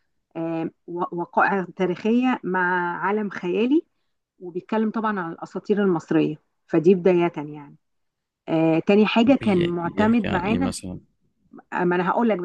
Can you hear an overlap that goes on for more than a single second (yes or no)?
yes